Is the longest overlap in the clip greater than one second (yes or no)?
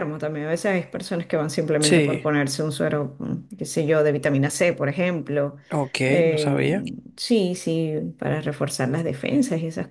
no